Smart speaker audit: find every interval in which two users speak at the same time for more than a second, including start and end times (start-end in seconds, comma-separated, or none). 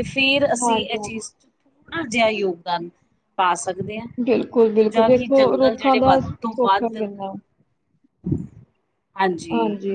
4.6-7.0